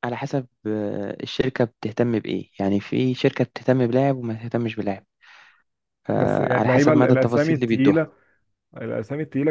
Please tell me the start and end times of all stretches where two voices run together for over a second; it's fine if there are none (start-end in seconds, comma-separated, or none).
6.2-8.1